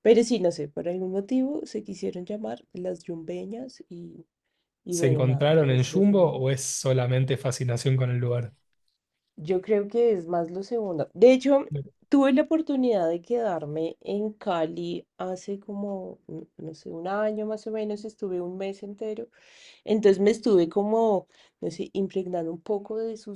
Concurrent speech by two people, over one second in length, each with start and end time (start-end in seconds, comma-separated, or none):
4.9-6.5